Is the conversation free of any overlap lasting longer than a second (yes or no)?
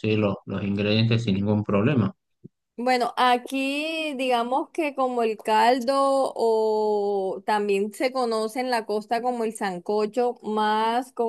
yes